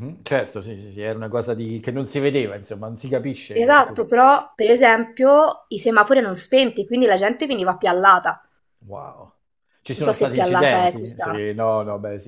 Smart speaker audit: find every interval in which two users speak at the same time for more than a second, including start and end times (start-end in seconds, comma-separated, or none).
9.9-11.4